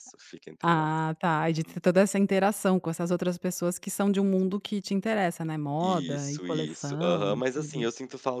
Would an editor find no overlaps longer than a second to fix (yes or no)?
no